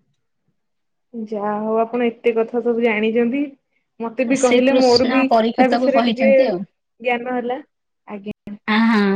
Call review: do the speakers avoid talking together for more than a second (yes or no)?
no